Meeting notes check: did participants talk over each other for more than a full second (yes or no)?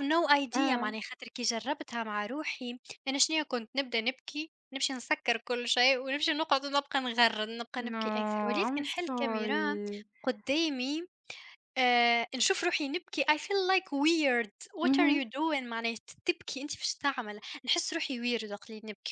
yes